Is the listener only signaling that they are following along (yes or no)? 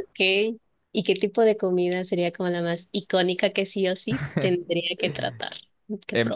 no